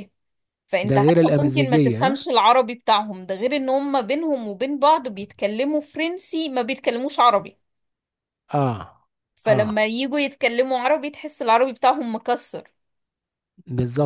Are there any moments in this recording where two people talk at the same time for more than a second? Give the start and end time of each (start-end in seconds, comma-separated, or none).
0.8-2.2